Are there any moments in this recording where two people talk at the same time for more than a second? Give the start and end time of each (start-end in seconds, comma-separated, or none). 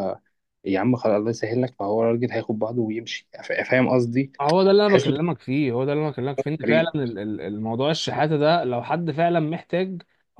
none